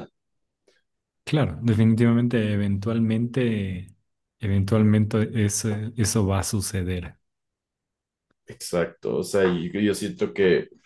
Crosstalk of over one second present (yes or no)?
no